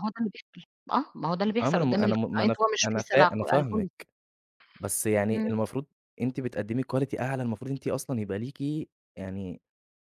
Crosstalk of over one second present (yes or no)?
yes